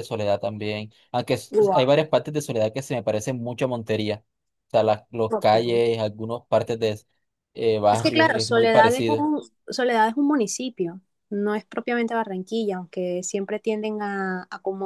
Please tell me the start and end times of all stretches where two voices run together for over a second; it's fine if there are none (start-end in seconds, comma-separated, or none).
7.9-9.3